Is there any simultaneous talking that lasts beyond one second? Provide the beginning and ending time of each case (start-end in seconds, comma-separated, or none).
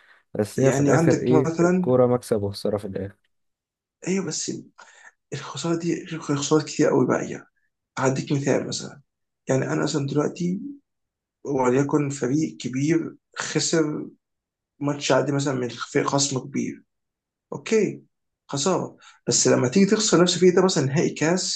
0.6-1.9